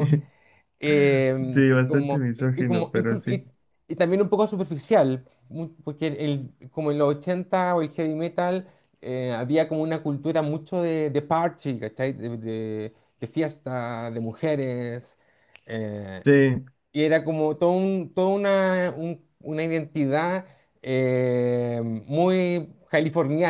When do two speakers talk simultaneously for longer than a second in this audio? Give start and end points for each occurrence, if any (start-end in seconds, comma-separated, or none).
1.5-3.4